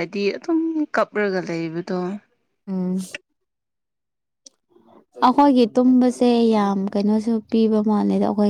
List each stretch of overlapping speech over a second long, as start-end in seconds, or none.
none